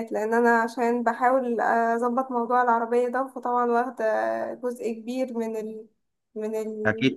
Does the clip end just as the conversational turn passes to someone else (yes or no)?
yes